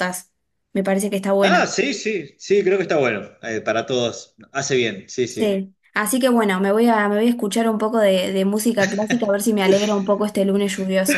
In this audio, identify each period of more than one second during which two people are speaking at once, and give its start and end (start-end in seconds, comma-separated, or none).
none